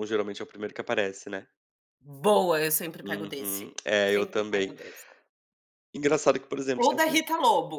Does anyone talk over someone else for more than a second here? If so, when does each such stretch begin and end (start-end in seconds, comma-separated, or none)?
3.0-4.8